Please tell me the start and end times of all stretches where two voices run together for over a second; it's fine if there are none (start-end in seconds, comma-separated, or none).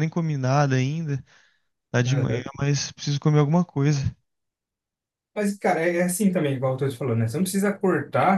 none